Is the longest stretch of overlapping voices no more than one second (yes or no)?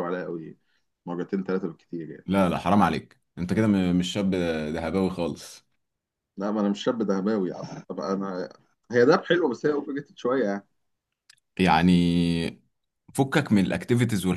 yes